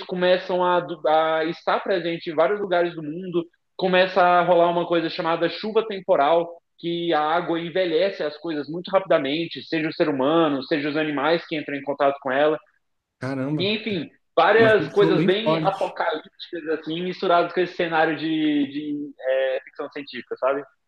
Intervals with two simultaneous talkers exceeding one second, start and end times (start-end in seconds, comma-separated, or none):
14.6-16.0